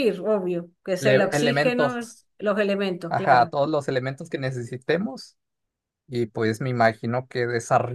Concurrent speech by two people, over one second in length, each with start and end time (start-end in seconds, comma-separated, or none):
1.0-2.2